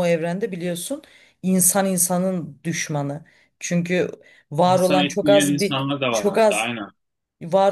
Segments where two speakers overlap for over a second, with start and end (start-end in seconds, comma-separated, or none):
4.6-6.7